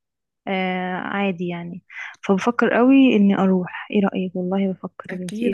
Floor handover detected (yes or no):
yes